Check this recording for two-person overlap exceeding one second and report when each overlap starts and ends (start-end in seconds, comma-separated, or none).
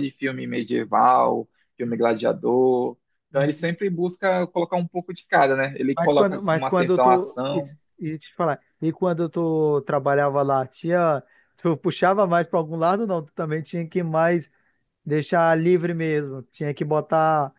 6.0-7.6